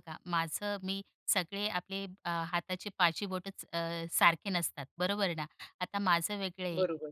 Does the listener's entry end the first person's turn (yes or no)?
no